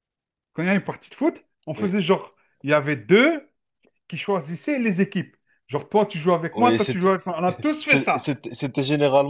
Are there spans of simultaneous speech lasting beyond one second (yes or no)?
no